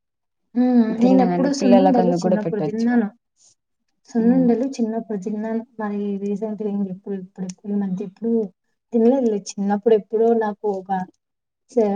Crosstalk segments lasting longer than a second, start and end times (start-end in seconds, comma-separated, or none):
1.0-2.9